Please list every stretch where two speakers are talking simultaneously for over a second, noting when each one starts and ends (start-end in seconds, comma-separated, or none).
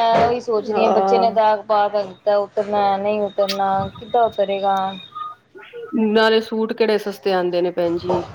none